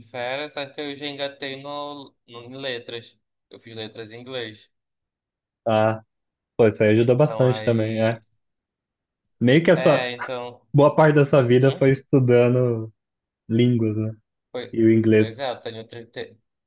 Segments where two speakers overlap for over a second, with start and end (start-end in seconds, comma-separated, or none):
7.0-8.2